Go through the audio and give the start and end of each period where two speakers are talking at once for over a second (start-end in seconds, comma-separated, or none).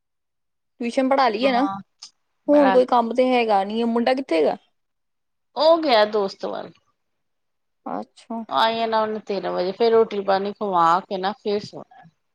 none